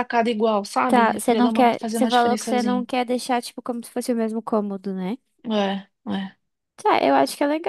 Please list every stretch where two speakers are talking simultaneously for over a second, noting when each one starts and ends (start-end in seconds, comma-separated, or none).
0.9-2.9